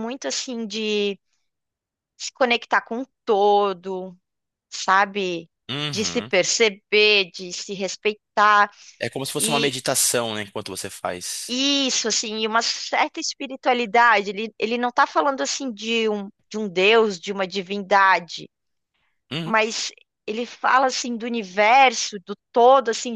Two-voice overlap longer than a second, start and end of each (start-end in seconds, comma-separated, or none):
none